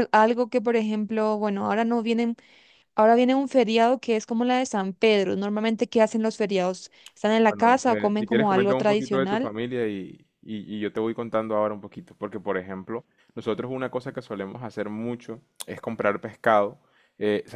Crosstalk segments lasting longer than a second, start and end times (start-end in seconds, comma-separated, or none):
7.5-9.5